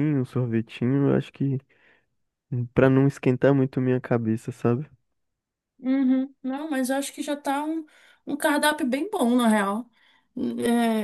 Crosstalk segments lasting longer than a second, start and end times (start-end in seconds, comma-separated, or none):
none